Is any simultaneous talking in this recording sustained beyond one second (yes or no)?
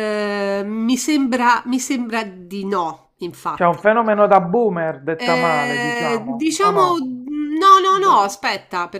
yes